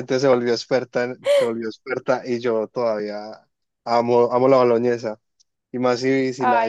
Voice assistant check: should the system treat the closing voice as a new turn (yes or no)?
no